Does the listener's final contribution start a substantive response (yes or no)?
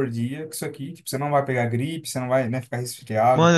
yes